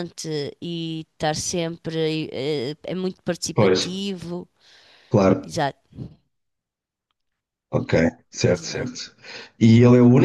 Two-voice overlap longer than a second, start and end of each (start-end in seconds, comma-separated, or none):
none